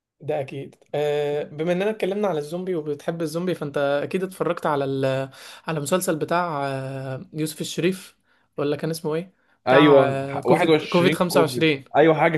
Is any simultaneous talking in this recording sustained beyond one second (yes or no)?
yes